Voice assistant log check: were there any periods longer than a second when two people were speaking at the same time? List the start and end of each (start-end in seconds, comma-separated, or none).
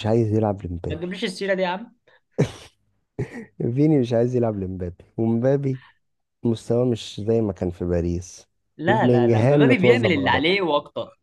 8.9-10.4